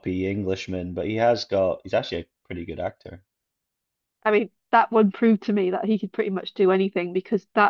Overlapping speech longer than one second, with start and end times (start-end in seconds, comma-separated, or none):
none